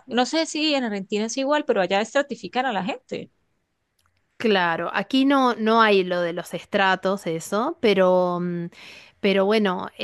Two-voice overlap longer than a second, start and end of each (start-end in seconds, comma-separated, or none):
none